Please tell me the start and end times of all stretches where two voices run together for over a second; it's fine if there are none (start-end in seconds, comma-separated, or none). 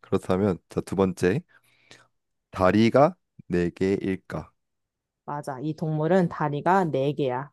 none